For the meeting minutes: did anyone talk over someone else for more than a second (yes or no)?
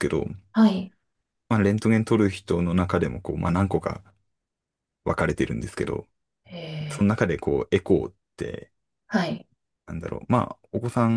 no